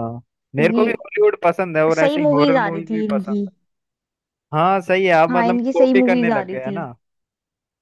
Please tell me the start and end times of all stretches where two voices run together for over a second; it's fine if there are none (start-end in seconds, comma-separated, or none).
1.9-3.4, 5.3-6.8